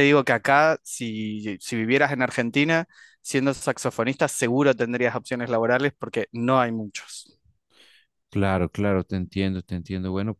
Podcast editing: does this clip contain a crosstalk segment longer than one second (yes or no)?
no